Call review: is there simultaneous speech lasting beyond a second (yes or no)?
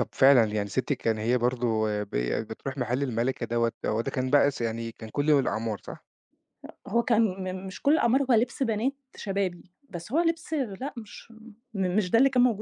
no